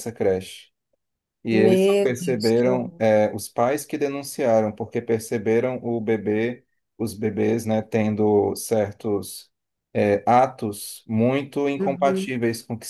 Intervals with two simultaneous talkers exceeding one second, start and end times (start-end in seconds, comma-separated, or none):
1.5-3.0